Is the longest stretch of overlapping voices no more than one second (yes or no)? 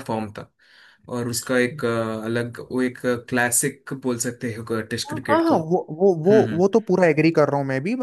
yes